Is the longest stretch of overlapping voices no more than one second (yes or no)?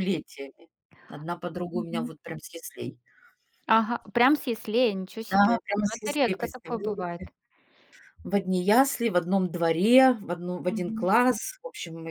no